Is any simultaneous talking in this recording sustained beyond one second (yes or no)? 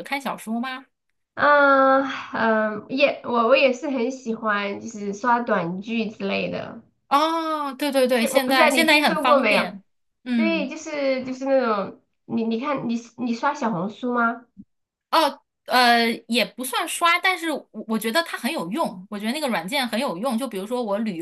yes